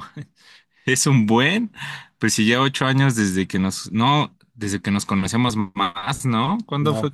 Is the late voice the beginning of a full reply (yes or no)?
yes